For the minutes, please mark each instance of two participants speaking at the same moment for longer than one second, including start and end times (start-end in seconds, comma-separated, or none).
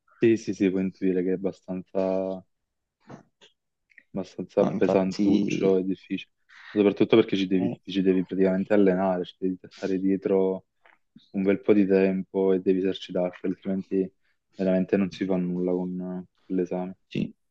4.6-5.8